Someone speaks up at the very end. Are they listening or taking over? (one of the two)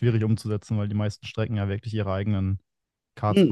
taking over